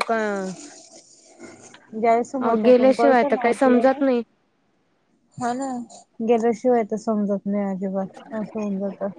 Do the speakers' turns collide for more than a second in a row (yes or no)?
yes